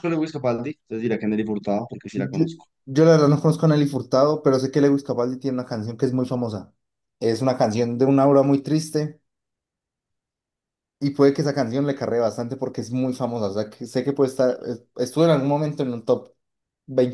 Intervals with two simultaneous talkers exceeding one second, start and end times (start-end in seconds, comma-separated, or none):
none